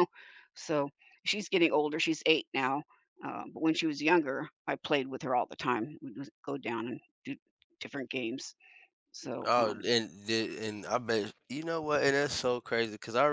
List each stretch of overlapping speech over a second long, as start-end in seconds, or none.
none